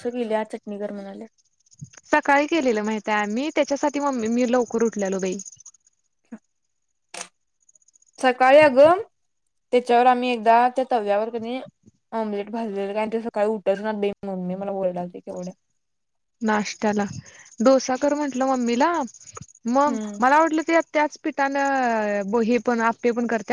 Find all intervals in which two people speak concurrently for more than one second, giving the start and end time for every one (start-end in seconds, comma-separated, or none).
none